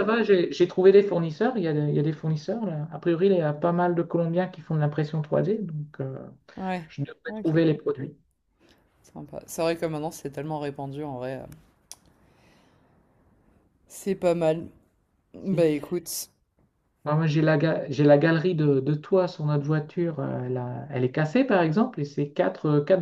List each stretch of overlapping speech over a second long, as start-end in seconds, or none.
none